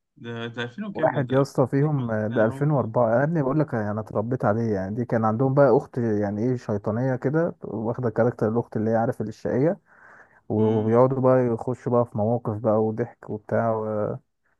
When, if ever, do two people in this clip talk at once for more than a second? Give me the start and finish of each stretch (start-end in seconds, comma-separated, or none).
0.9-2.8